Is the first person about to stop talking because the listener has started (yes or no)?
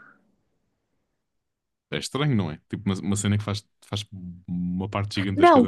yes